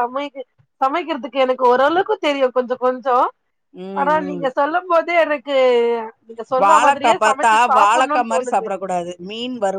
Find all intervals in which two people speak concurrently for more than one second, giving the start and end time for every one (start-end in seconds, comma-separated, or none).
6.6-8.7